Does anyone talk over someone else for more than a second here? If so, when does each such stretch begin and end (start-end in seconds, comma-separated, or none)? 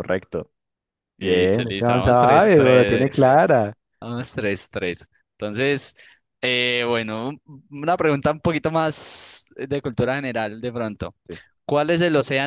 1.2-3.1